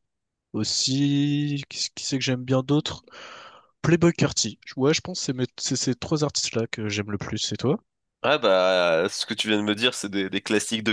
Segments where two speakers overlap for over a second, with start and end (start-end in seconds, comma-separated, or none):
none